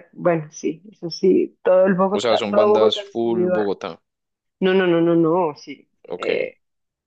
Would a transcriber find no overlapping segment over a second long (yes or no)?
no